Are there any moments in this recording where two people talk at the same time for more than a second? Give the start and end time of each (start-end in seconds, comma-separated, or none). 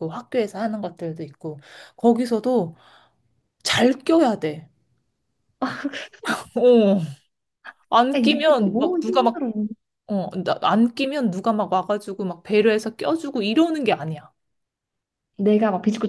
8.2-9.4